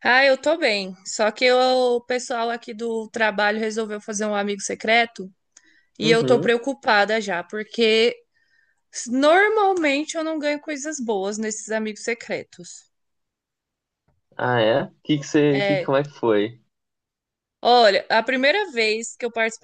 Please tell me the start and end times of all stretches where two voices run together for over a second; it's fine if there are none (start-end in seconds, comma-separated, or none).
none